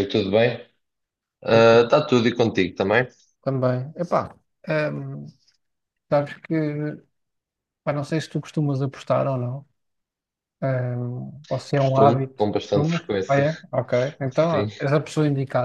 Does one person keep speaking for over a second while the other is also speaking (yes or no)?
yes